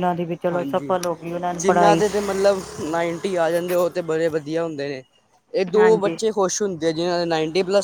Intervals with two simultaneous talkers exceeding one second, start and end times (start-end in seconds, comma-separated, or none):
none